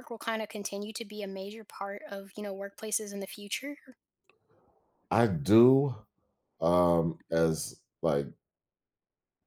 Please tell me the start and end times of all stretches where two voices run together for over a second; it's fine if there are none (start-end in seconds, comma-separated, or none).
none